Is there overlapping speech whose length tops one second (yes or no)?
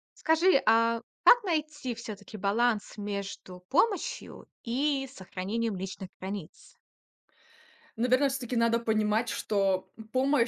no